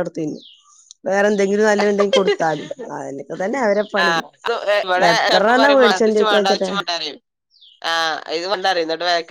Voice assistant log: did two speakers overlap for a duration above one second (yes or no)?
no